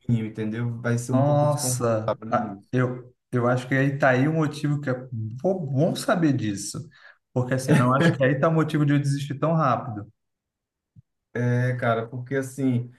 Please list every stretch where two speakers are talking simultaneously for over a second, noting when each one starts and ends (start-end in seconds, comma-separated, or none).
1.1-2.7